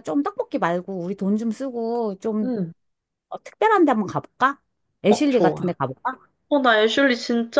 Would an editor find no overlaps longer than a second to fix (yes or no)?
yes